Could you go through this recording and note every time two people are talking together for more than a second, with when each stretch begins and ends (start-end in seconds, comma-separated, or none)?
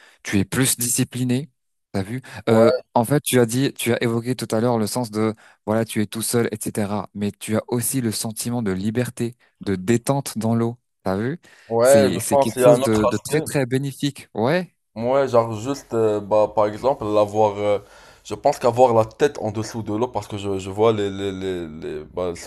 11.8-13.4